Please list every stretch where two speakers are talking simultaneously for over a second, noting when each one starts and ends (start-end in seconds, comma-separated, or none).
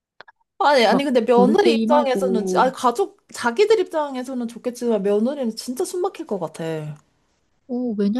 0.9-2.7